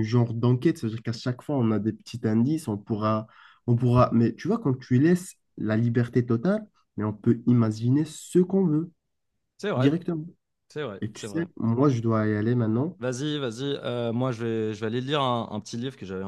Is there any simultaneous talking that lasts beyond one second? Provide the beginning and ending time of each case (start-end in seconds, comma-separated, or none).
none